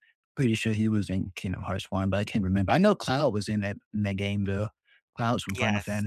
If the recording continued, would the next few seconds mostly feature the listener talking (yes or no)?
yes